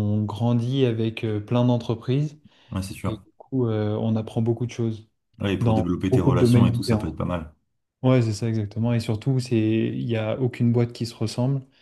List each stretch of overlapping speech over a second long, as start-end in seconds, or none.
5.6-7.1